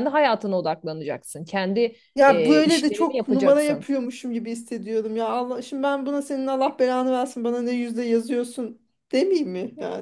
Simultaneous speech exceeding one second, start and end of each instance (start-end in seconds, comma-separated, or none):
2.1-3.9